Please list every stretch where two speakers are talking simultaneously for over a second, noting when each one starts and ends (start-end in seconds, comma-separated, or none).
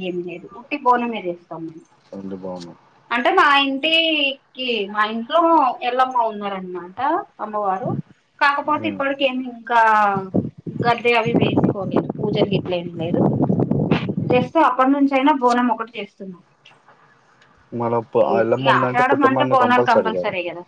18.2-19.9